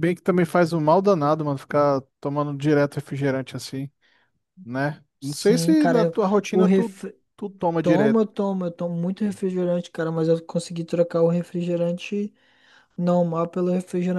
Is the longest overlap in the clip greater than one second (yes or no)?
yes